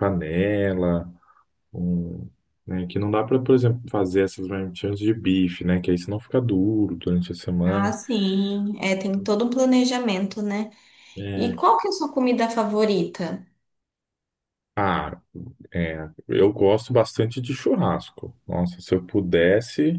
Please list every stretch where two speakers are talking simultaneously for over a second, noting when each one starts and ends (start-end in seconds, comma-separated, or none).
none